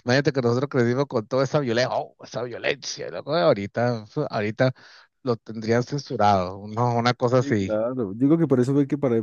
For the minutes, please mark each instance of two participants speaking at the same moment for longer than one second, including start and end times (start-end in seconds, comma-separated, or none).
none